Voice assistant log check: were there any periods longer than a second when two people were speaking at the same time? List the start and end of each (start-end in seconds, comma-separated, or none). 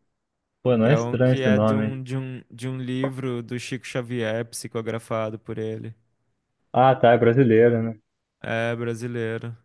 0.8-2.0